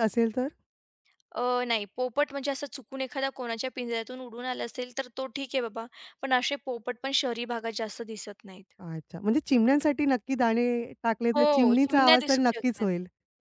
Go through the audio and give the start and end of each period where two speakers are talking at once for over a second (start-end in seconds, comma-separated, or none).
11.3-12.8